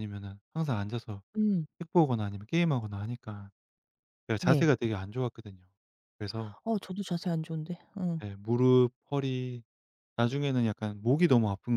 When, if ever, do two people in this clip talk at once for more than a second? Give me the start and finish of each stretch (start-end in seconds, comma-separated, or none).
none